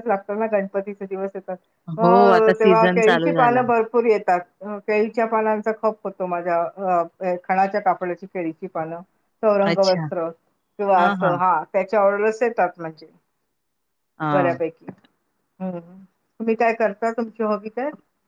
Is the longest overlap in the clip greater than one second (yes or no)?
yes